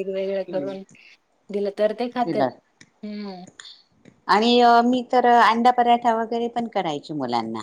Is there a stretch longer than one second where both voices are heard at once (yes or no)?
no